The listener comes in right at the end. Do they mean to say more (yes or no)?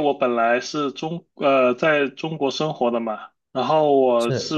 no